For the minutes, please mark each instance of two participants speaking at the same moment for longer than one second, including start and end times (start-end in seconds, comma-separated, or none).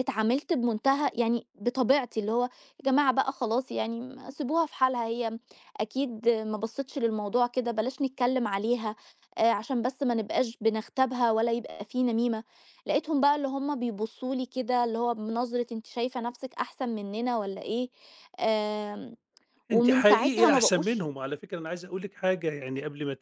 19.7-21.1